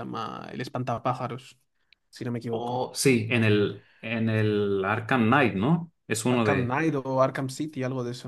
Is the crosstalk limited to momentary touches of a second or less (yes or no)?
yes